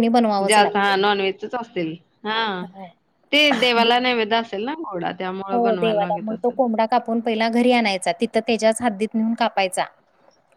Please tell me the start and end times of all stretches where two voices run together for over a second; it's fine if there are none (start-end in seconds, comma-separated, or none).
none